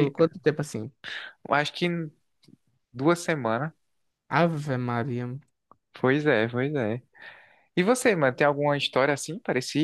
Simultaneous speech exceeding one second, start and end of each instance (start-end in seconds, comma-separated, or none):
none